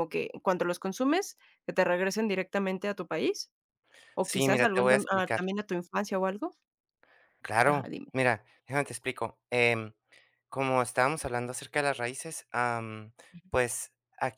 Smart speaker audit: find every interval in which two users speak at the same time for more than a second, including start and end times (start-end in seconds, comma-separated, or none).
4.2-5.4